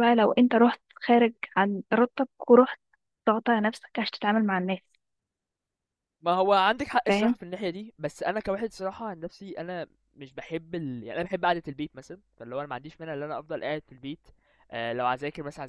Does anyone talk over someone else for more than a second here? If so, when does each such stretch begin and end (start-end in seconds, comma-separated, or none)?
none